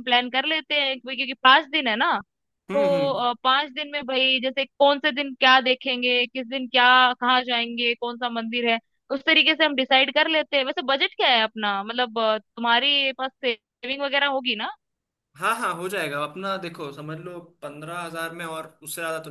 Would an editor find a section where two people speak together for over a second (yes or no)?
no